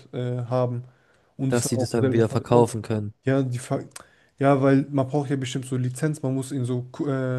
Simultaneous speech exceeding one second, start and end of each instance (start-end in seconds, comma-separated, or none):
1.5-2.7